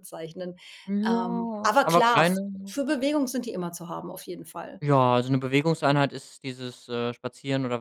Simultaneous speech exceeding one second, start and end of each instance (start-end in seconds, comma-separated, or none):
1.1-2.8